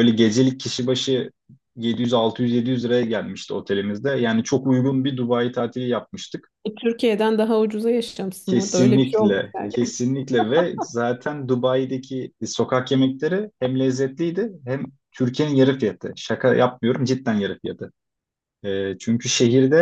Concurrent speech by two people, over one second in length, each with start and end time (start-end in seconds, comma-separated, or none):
8.4-9.7